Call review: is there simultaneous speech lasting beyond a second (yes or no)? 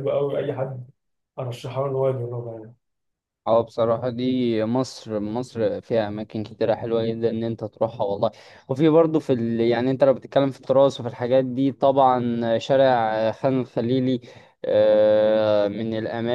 no